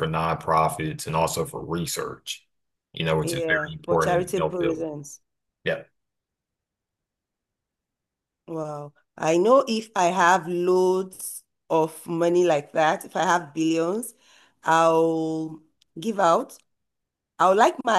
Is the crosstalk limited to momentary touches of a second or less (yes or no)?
no